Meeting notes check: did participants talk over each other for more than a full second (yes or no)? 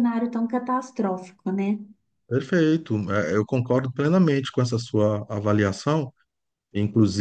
no